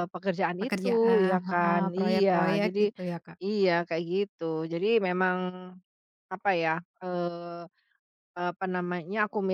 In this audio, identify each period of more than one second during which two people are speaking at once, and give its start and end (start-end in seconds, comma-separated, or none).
0.6-2.8